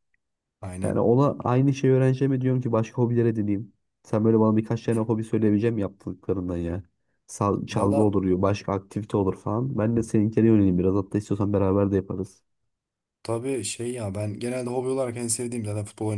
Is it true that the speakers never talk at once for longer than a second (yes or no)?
yes